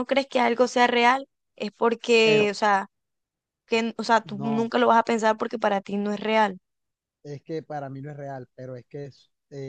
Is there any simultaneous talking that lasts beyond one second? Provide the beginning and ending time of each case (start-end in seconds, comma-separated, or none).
none